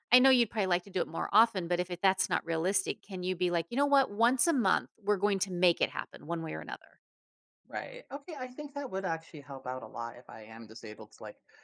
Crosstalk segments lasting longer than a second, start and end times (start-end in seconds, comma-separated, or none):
none